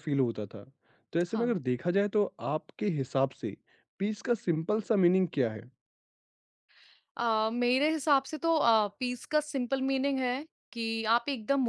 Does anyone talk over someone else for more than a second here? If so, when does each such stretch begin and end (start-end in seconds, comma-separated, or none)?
none